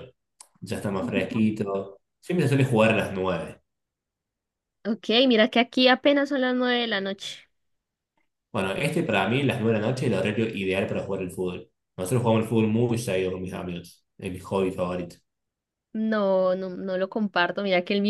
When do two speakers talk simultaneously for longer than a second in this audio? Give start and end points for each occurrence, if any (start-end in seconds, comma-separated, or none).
none